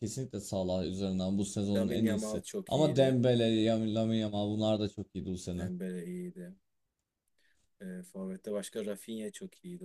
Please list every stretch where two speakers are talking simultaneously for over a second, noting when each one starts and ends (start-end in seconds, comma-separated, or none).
1.7-3.2